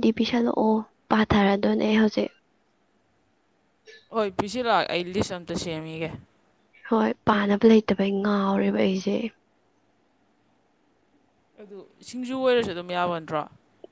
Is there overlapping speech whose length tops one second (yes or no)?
no